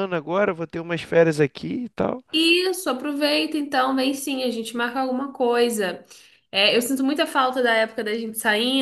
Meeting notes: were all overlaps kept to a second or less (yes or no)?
yes